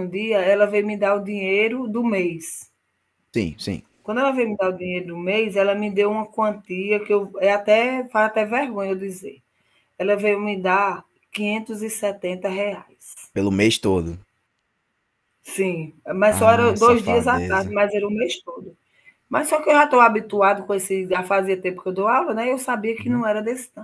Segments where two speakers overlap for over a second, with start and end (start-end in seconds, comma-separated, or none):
16.3-17.8